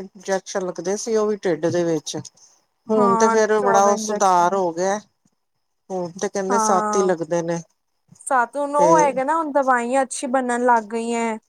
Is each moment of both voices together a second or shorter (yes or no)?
no